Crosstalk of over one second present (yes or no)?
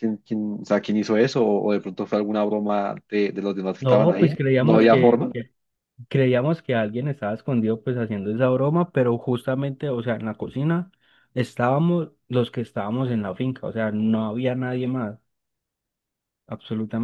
yes